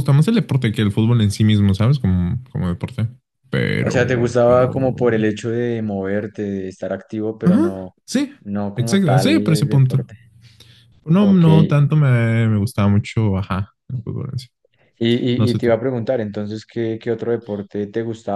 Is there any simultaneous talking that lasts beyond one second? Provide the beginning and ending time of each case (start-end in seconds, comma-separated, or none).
3.8-5.1, 8.8-10.1